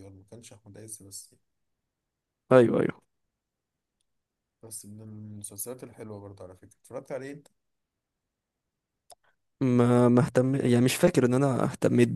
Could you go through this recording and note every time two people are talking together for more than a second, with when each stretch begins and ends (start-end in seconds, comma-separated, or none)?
none